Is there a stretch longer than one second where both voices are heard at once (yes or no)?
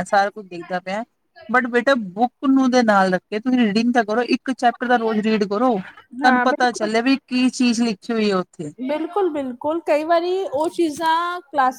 no